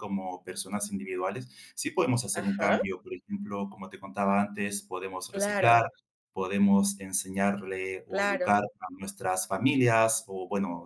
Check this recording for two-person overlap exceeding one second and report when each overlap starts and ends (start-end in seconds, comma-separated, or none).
none